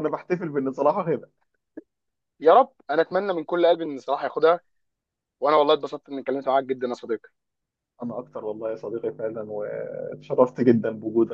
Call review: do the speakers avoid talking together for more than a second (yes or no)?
yes